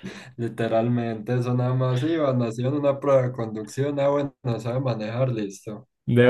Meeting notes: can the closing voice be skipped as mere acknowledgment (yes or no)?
yes